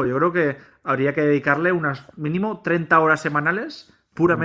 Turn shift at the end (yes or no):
yes